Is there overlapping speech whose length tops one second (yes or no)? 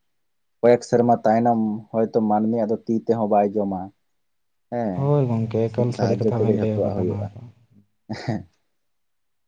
yes